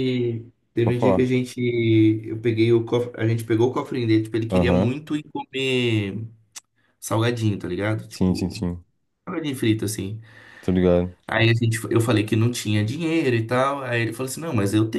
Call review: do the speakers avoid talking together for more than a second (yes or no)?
yes